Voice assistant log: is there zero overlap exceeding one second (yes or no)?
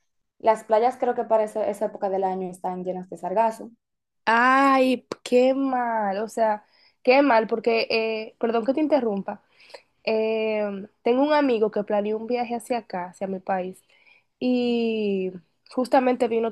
yes